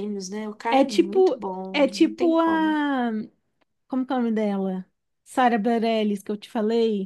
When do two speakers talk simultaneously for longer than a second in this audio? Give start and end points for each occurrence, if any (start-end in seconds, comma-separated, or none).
0.7-2.8